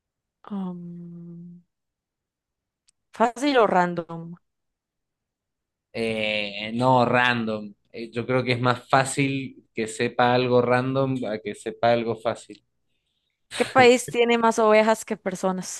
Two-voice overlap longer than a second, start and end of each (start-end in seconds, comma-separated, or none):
none